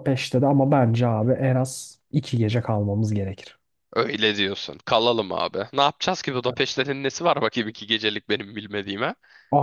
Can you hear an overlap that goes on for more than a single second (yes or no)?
no